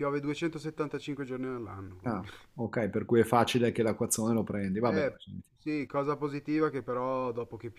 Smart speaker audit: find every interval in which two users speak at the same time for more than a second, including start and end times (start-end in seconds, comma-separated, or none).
none